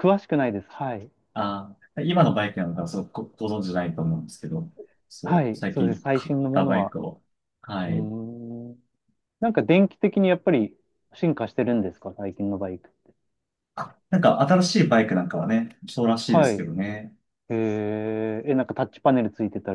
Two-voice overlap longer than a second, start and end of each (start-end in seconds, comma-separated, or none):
5.2-7.0